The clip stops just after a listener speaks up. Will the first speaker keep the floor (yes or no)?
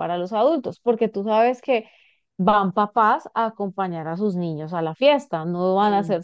yes